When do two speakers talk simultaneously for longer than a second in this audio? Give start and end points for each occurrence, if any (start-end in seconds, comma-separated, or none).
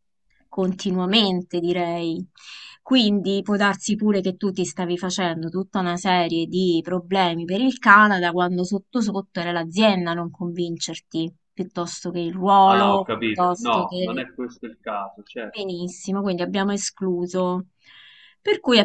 12.7-14.3